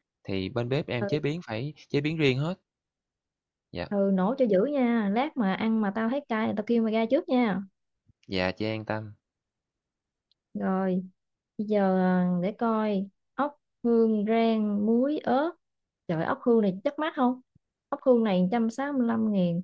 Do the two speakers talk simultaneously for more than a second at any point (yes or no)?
no